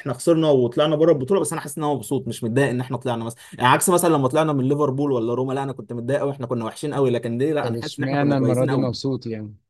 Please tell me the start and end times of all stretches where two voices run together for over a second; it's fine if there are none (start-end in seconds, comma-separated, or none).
7.6-8.9